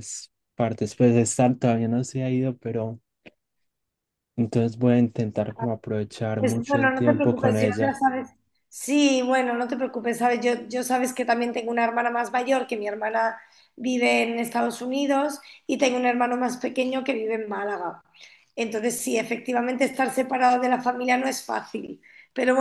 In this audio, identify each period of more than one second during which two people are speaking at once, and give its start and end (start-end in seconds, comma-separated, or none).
6.4-8.0